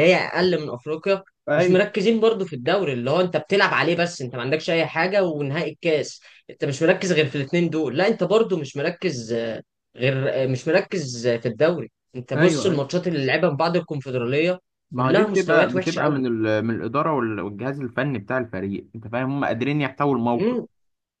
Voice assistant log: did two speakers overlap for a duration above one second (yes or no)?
yes